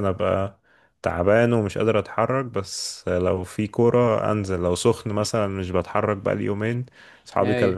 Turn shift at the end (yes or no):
no